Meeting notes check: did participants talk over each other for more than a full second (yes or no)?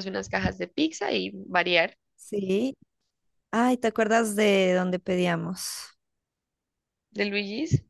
no